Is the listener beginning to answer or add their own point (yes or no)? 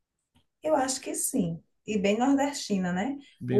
no